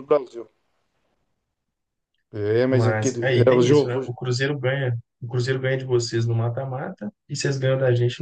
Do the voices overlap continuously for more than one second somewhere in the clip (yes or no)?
yes